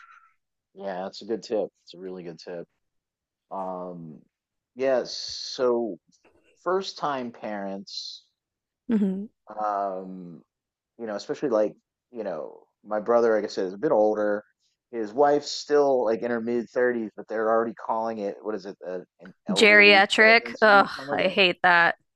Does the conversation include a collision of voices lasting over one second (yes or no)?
yes